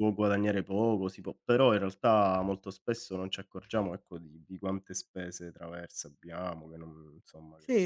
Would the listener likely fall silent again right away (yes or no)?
no